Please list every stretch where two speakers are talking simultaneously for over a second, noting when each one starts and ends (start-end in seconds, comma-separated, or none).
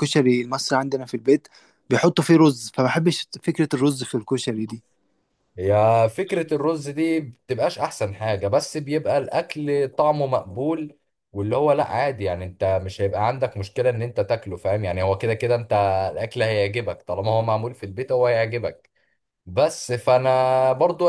none